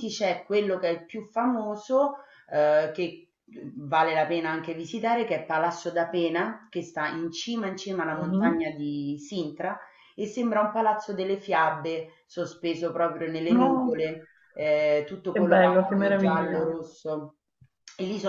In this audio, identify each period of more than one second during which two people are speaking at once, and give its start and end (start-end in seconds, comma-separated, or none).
15.3-16.8